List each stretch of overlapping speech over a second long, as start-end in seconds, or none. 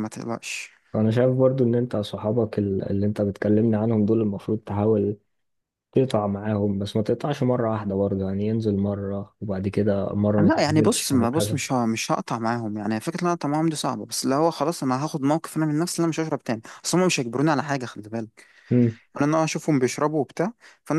10.4-11.6